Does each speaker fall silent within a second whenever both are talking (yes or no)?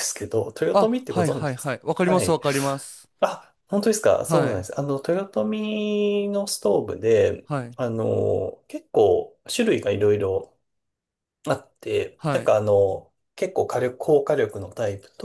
no